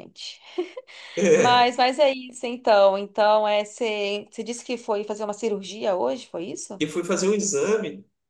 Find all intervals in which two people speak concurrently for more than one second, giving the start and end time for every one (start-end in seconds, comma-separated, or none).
none